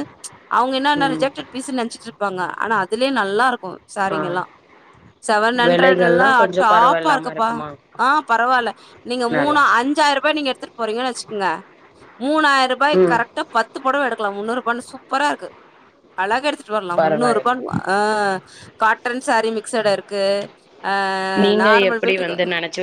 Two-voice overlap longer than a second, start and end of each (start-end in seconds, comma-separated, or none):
5.7-7.5